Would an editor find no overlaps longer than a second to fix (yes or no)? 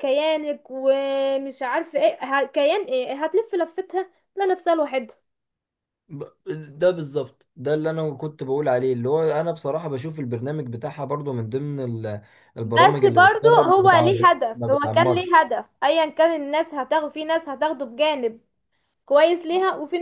no